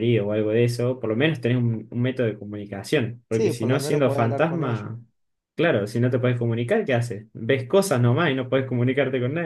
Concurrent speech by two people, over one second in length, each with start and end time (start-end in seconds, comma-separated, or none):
3.3-4.9